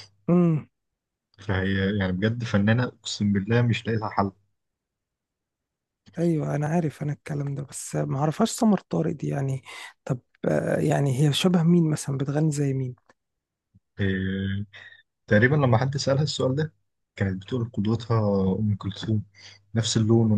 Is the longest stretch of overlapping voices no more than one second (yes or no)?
yes